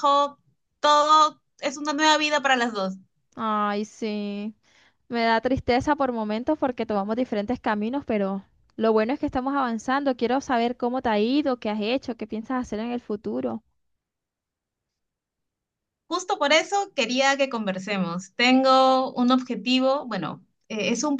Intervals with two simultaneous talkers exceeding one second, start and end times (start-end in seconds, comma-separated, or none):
none